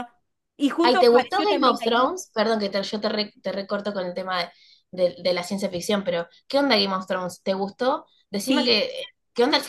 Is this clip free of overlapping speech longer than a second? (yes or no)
no